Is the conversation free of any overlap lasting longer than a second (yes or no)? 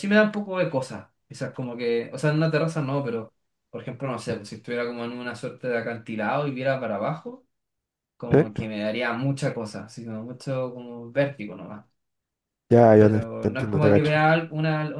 no